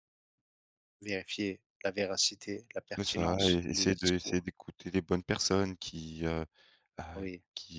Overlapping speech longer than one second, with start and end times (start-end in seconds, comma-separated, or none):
3.0-4.4